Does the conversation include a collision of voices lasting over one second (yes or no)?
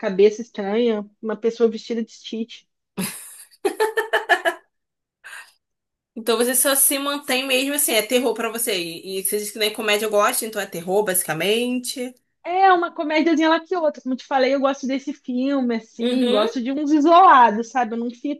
no